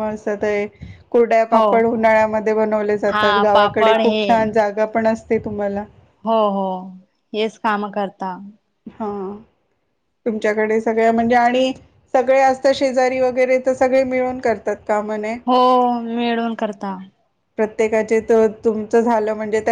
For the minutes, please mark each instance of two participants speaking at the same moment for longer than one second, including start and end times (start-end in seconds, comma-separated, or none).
3.1-4.5